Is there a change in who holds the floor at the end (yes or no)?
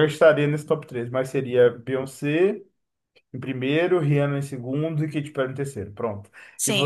yes